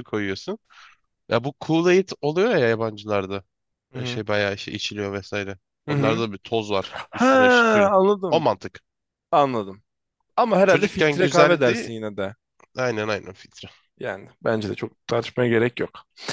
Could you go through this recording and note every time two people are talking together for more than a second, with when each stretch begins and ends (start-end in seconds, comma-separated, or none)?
10.7-11.9